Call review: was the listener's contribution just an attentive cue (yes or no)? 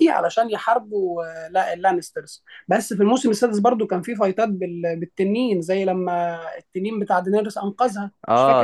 no